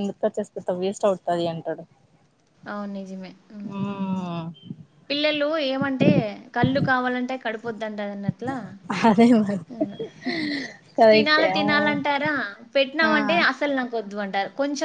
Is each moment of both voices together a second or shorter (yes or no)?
yes